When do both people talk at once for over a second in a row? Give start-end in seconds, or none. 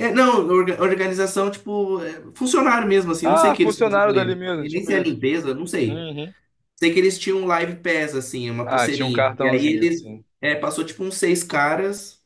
3.2-5.1, 8.6-10.2